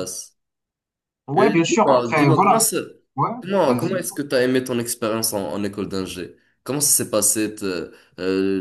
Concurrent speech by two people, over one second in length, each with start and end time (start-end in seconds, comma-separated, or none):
1.3-2.7